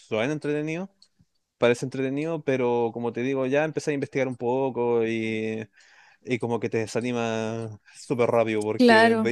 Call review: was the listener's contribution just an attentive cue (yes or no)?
yes